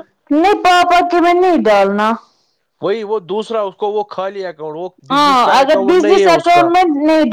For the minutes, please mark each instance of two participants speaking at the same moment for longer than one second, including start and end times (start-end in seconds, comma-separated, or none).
5.1-6.7